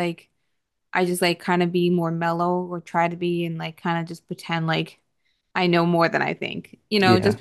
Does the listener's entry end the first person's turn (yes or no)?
no